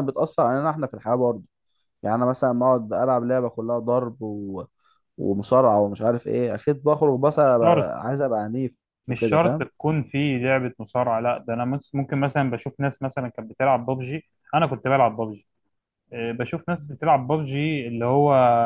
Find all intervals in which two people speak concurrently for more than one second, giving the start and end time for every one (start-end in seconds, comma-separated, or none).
none